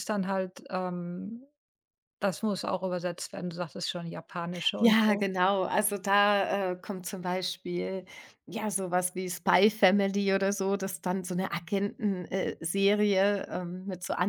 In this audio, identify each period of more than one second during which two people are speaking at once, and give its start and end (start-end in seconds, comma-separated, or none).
none